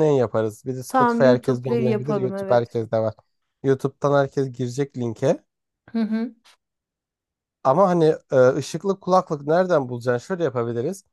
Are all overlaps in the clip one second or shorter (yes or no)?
no